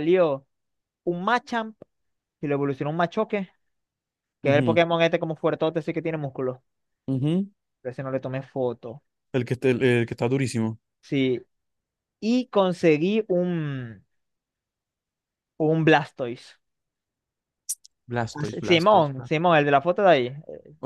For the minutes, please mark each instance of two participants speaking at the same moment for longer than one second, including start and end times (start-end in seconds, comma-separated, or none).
18.3-19.6